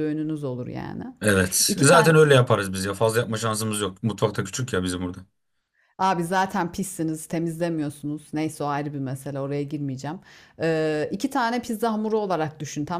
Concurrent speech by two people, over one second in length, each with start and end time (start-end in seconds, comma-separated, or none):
none